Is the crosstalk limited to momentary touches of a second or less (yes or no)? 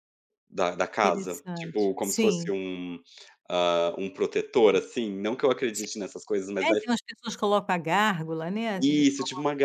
no